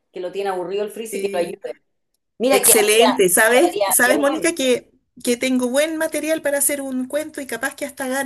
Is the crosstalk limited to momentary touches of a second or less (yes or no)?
no